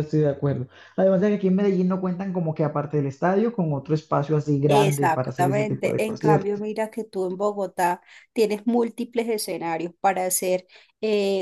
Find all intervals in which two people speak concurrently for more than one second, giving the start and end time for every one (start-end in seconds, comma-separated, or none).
4.7-6.6